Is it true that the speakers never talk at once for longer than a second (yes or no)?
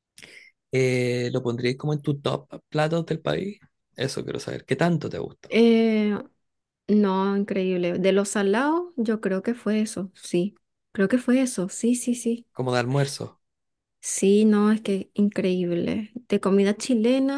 yes